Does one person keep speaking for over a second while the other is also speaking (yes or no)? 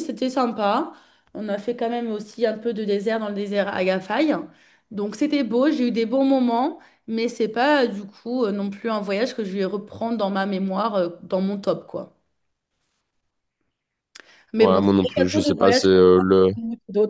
yes